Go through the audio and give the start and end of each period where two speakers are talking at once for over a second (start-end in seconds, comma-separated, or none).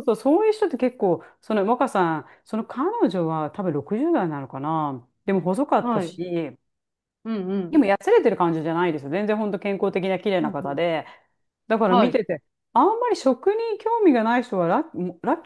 none